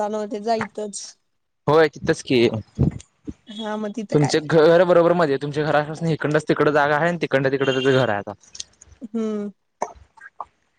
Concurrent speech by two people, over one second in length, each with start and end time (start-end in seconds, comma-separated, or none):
none